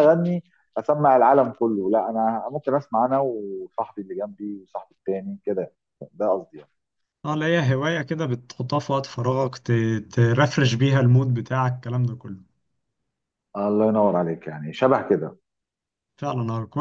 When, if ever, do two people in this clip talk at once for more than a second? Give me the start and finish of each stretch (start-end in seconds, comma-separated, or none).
none